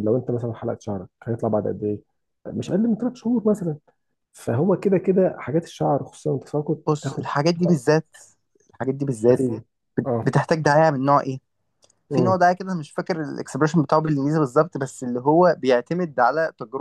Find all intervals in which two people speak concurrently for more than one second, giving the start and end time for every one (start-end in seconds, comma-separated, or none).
none